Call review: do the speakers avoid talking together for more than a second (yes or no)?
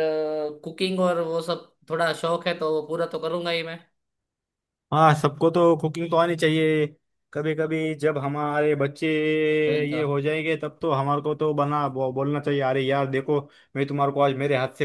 yes